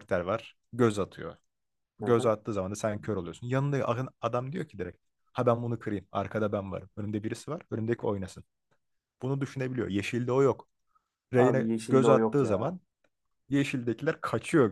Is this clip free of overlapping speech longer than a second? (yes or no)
no